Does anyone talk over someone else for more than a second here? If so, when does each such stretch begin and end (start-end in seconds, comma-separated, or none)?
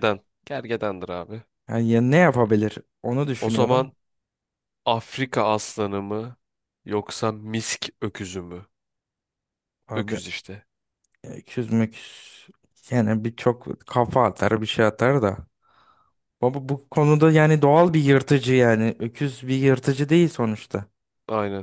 none